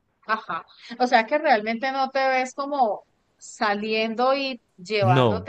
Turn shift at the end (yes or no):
no